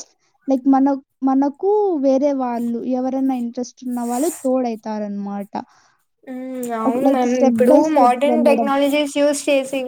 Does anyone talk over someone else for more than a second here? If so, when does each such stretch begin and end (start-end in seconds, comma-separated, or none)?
none